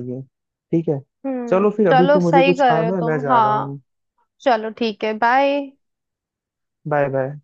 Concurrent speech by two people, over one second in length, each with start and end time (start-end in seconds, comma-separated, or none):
1.5-3.8